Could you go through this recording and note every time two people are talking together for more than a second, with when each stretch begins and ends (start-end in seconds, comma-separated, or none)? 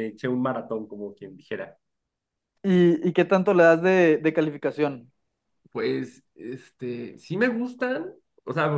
none